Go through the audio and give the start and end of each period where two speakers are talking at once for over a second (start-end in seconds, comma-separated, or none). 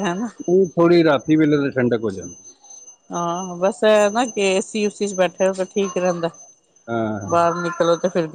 none